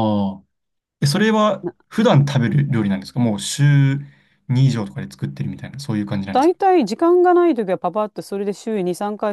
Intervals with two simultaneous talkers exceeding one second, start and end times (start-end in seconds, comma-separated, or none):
none